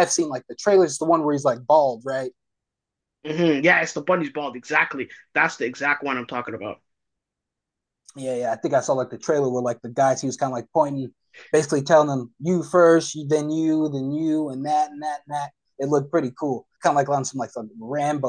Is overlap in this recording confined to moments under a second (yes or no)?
yes